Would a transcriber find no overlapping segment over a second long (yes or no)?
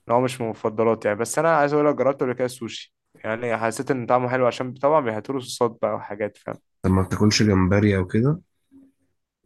yes